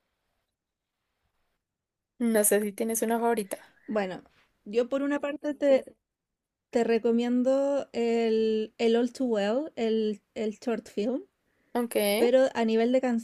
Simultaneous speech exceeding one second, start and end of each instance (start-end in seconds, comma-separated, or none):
none